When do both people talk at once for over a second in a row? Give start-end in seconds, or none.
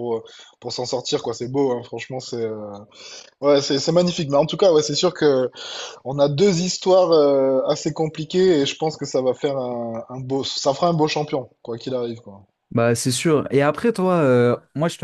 none